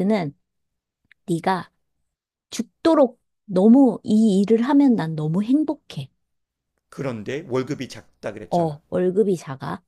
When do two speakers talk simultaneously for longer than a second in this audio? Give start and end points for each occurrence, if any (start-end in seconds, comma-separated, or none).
none